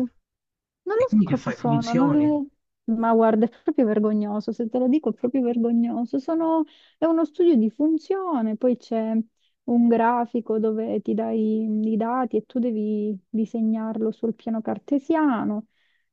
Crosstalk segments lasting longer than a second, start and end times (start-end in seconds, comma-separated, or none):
1.0-2.4